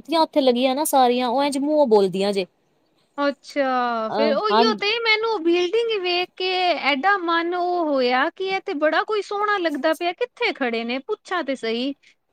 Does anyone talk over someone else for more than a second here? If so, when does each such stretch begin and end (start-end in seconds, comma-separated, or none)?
none